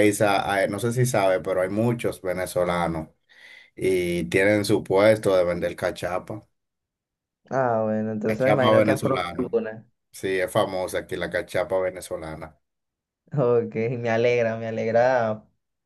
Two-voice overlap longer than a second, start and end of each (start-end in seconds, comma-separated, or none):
8.3-9.5